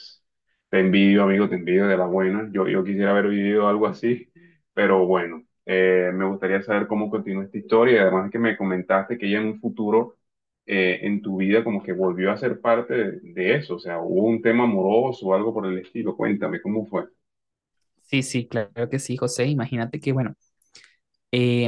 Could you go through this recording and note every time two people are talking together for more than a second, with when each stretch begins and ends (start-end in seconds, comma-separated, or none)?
none